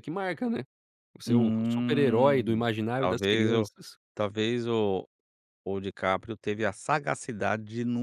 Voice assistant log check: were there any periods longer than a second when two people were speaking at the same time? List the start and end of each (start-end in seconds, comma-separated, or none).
1.3-3.7